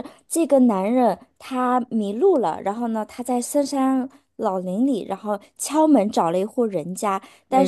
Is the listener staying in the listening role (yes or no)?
yes